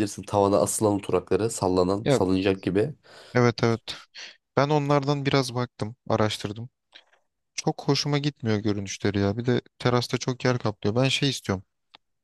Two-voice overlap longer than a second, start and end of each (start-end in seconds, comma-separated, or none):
none